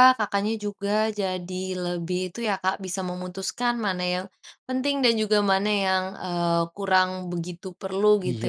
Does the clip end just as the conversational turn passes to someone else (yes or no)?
yes